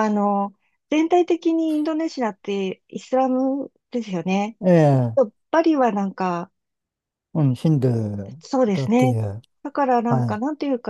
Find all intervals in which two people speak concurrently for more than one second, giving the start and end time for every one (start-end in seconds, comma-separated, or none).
none